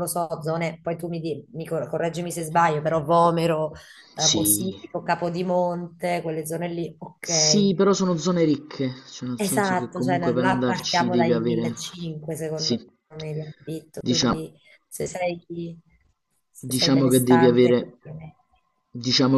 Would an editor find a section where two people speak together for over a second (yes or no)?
yes